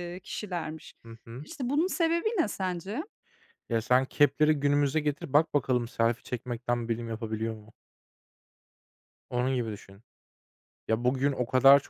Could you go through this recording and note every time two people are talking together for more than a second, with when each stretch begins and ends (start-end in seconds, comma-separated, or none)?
none